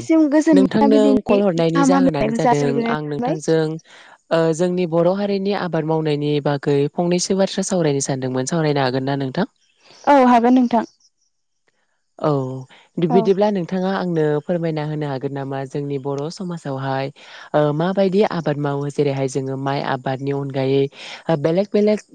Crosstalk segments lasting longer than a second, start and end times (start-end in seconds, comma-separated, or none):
0.6-3.4